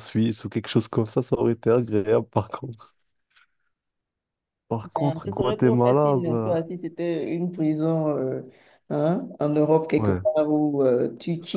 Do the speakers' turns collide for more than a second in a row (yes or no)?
yes